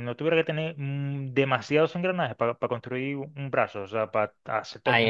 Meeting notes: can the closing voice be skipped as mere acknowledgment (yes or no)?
no